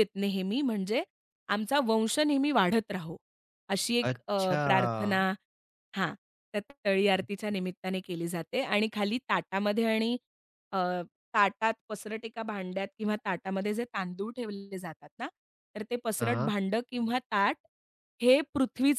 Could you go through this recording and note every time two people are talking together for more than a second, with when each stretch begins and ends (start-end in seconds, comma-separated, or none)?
4.0-5.3